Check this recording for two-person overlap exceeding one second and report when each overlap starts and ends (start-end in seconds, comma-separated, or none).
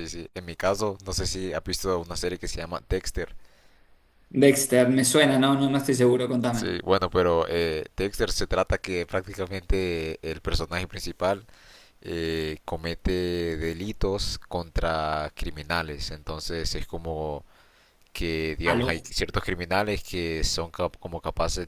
none